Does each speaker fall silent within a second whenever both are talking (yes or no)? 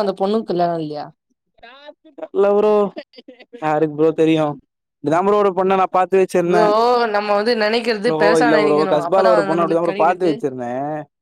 no